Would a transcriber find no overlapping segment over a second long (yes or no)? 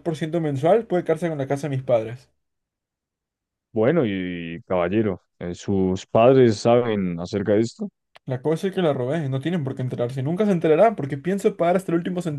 yes